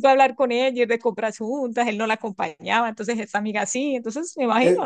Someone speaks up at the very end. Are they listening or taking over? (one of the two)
taking over